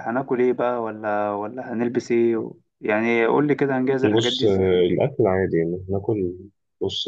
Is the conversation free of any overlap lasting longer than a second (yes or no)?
yes